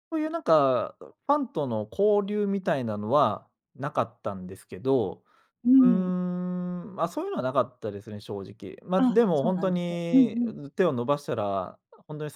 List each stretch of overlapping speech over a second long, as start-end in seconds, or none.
9.0-10.4